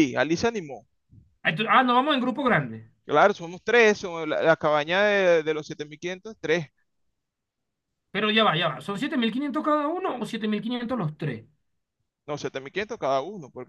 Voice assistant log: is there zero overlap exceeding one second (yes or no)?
yes